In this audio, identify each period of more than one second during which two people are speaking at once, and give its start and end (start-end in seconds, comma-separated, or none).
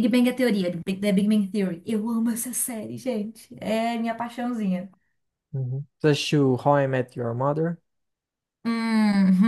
none